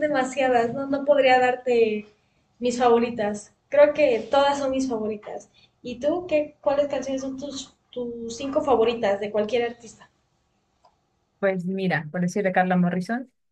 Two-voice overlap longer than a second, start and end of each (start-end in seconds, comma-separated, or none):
none